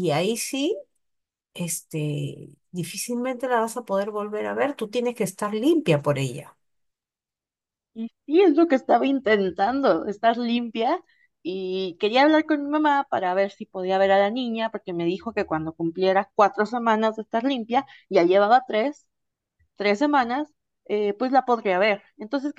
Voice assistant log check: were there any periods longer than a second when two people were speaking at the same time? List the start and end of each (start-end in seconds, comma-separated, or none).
none